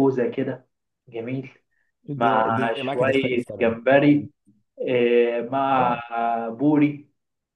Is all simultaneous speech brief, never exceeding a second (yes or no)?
no